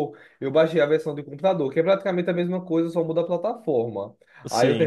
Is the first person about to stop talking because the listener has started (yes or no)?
no